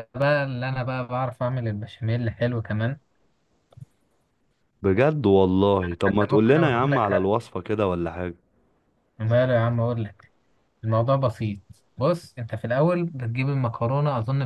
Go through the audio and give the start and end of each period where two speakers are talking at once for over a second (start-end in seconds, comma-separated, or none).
5.9-7.3